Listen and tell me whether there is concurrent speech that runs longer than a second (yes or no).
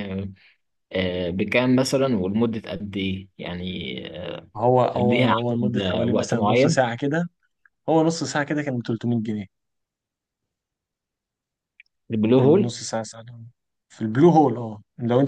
yes